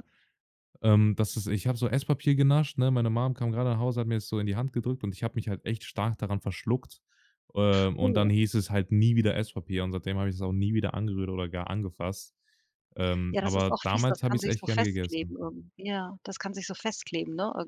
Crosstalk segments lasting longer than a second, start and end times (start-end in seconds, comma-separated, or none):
13.3-15.4